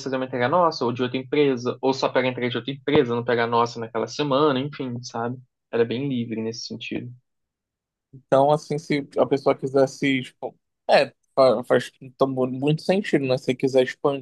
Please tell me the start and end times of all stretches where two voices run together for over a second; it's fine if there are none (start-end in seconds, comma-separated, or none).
none